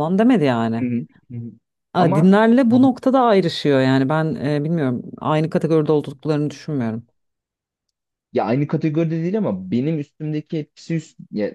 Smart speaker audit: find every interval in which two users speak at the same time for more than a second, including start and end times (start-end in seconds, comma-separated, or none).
none